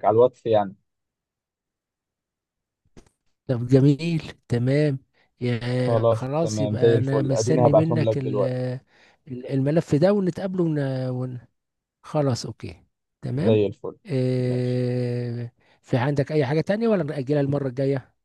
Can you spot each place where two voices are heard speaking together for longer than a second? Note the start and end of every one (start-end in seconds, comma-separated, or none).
5.9-8.4